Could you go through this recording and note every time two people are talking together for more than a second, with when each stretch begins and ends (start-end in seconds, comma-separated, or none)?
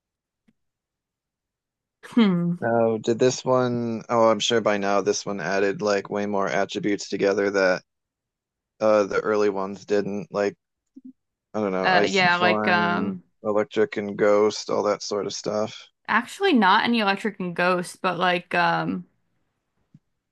11.8-13.2